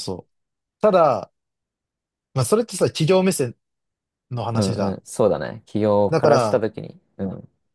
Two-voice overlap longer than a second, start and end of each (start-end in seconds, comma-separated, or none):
none